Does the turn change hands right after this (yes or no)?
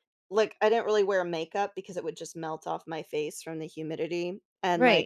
yes